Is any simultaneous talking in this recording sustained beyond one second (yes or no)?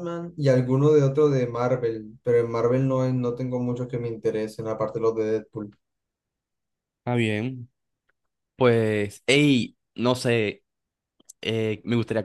no